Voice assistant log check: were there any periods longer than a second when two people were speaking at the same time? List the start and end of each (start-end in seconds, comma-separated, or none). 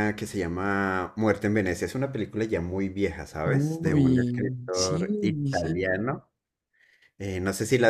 3.4-6.0